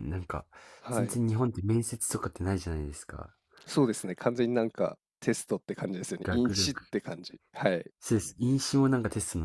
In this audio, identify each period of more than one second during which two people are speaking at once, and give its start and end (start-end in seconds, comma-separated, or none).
none